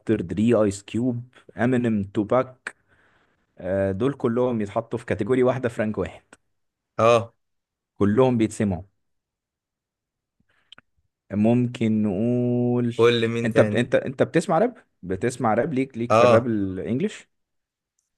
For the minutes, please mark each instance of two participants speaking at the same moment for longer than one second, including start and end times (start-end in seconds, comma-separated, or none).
none